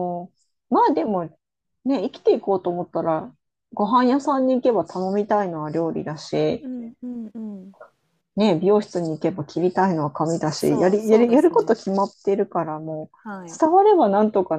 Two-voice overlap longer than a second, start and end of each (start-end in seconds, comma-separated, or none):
10.6-11.8